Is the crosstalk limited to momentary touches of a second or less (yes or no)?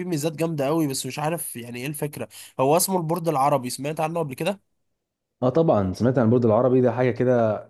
yes